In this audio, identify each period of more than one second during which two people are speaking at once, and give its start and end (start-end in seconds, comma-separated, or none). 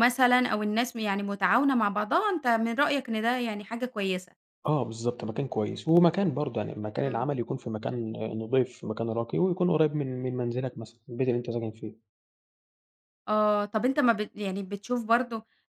none